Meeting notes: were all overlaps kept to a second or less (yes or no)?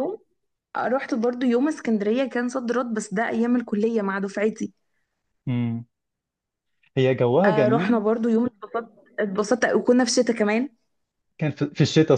yes